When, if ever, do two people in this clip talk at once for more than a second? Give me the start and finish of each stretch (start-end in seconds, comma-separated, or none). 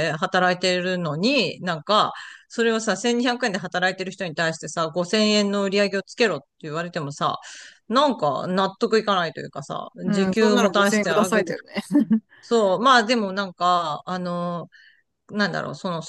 10.1-11.5